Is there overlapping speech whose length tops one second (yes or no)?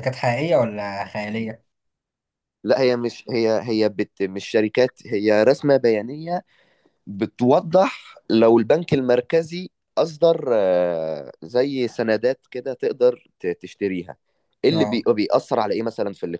no